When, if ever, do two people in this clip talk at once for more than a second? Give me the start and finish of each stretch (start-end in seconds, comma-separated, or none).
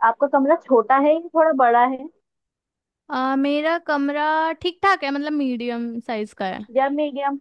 none